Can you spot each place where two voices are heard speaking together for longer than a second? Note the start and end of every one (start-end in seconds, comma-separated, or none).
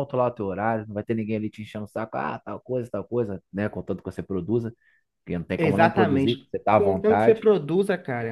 5.6-7.5